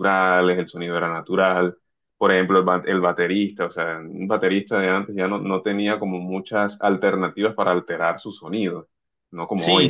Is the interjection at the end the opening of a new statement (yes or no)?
yes